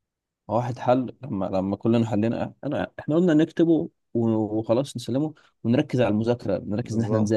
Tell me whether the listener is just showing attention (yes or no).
yes